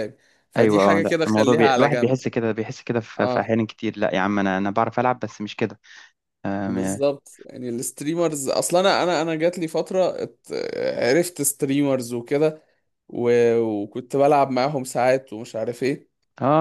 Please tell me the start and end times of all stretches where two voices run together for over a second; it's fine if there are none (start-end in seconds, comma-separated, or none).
0.6-2.2